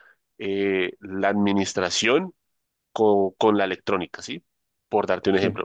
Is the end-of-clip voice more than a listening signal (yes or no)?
no